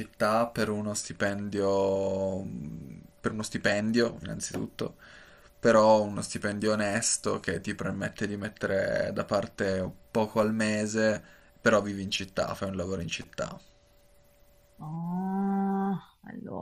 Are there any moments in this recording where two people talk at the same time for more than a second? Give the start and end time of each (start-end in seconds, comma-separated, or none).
none